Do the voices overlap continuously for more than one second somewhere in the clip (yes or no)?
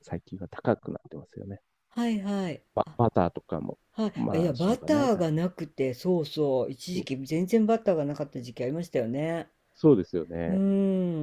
yes